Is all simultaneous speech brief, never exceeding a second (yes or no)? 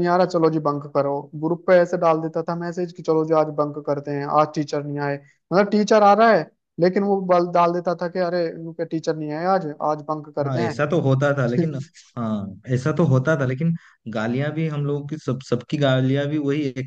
yes